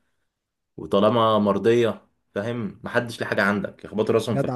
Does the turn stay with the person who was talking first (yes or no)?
no